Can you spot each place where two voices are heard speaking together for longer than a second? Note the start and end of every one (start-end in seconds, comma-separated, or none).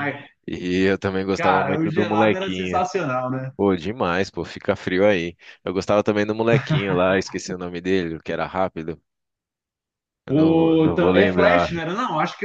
1.3-2.8, 10.3-11.8